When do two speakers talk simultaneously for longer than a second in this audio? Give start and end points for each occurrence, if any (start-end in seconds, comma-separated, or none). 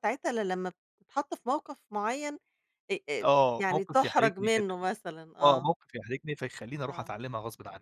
3.2-4.8